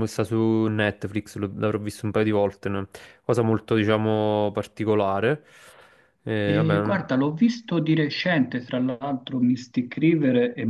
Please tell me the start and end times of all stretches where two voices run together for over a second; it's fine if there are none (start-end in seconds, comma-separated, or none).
none